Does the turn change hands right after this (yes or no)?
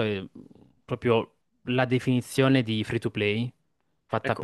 yes